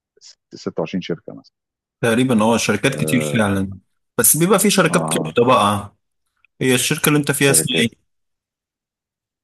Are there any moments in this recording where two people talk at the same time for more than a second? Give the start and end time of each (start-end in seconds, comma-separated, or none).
none